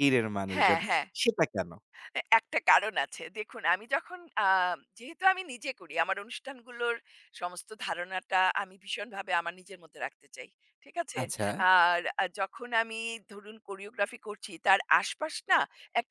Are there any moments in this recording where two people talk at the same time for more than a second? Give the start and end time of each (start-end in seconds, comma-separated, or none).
none